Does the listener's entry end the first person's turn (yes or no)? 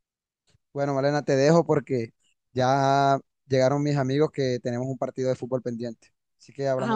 yes